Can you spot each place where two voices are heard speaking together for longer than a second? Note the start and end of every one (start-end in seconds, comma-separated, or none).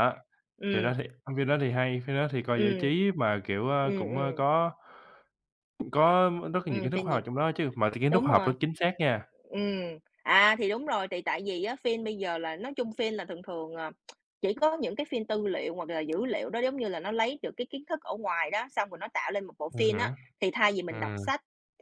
none